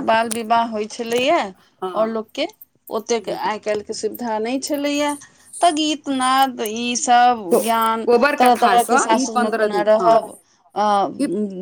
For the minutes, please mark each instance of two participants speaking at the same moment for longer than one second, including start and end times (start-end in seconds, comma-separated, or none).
7.5-10.1